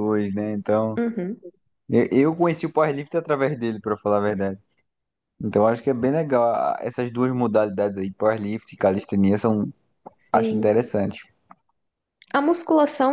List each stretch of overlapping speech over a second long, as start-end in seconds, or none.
none